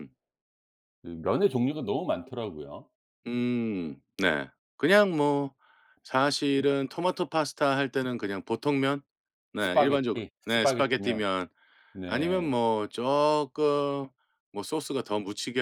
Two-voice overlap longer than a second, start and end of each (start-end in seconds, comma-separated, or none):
9.6-11.2